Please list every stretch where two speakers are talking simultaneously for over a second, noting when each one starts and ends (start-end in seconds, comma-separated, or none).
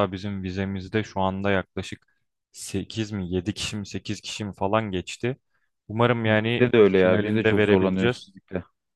6.2-8.3